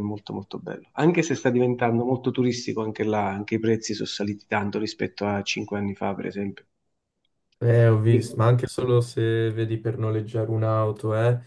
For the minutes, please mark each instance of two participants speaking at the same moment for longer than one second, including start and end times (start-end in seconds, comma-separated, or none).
none